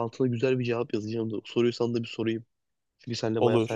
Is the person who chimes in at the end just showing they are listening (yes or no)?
yes